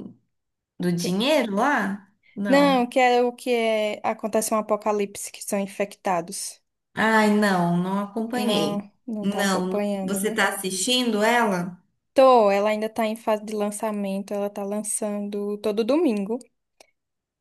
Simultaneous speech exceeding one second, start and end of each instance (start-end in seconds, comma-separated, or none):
8.4-10.5